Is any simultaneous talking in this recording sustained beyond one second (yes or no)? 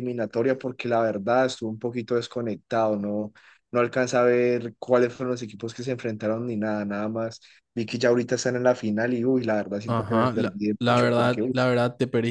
yes